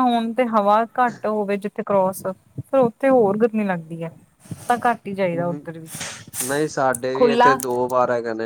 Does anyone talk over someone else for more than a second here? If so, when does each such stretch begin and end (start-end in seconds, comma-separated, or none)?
none